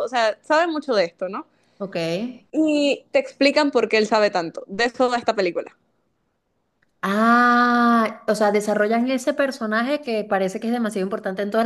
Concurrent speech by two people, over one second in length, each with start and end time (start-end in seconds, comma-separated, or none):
none